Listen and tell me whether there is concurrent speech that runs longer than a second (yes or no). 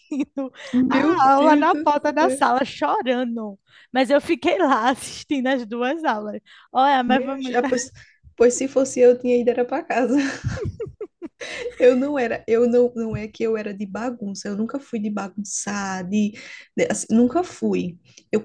yes